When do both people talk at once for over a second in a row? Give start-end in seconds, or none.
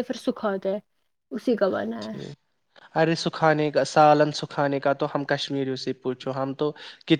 none